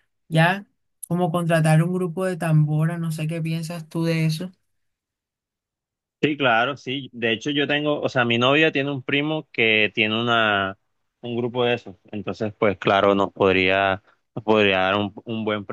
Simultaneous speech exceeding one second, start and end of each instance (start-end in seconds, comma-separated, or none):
none